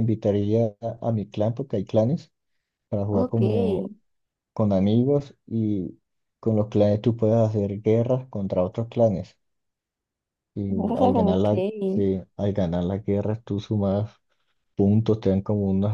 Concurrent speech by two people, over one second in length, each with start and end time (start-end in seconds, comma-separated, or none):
10.7-12.1